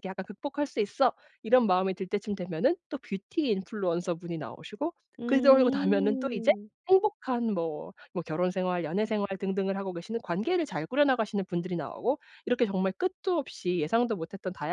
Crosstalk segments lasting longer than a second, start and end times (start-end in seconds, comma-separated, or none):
5.2-6.5